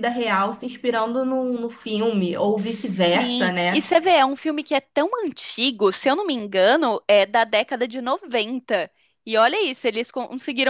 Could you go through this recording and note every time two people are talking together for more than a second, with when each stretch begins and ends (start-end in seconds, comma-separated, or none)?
2.6-3.9